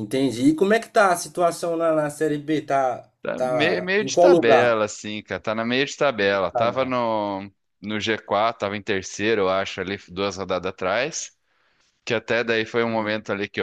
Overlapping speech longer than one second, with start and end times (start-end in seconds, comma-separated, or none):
3.2-4.8